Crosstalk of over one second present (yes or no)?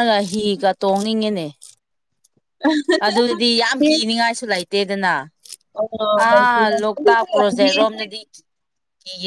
yes